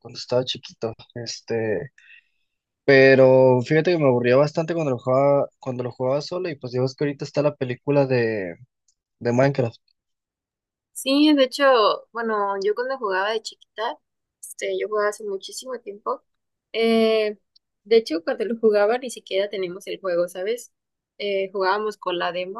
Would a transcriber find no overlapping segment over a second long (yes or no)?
yes